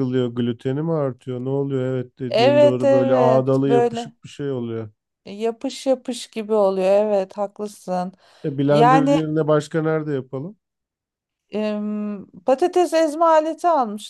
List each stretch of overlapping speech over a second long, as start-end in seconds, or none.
2.3-4.1